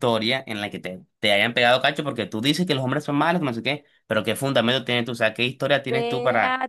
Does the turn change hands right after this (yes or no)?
yes